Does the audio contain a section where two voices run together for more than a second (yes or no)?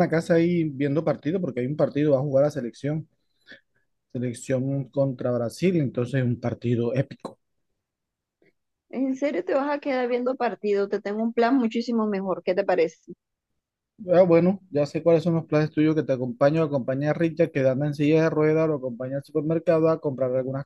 no